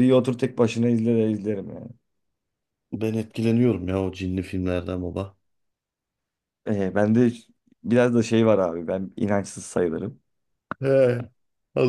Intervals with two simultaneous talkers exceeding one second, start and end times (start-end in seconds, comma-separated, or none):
none